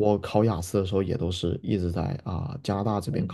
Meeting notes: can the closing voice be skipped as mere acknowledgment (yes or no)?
no